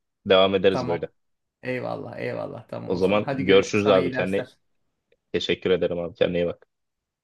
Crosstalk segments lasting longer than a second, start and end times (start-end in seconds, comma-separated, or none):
2.9-4.5